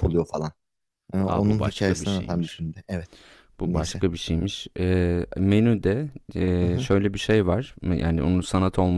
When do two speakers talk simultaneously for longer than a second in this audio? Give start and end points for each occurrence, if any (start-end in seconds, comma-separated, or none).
1.2-2.6